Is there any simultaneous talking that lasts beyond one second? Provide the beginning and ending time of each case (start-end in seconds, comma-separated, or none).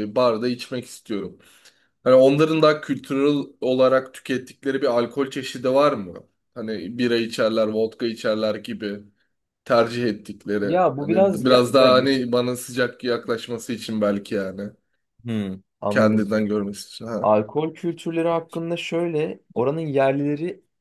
10.6-12.1